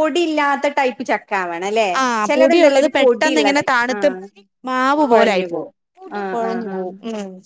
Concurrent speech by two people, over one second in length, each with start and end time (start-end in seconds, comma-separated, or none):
2.3-4.1